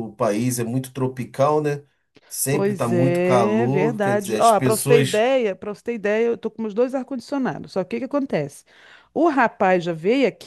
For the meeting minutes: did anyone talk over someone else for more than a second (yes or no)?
yes